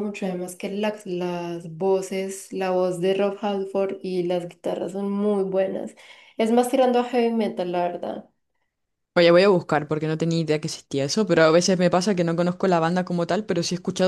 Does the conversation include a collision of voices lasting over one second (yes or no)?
no